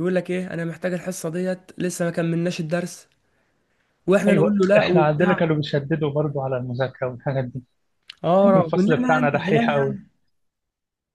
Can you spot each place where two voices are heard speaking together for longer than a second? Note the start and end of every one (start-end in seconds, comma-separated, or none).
4.3-5.5, 8.4-10.0